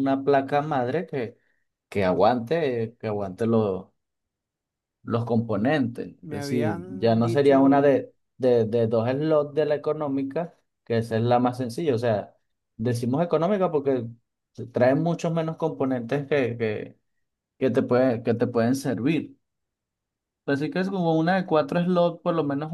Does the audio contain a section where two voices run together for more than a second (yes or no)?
yes